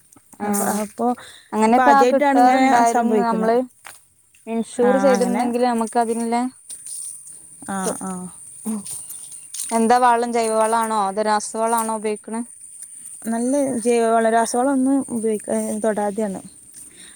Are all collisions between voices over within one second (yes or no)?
no